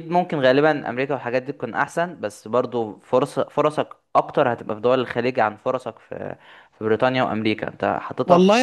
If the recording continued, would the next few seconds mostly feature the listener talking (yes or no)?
yes